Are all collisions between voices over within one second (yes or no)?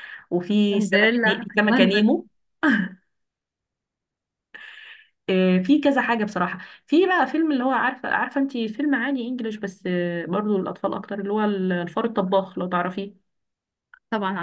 no